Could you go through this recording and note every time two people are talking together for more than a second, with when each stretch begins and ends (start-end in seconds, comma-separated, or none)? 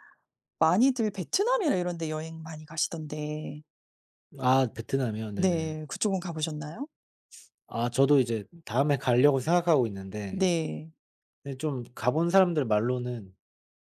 none